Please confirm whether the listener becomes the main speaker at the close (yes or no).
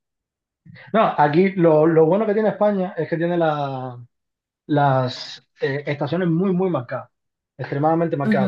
no